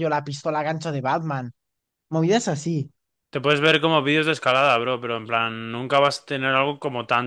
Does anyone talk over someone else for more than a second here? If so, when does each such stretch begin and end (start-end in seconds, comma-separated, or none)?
none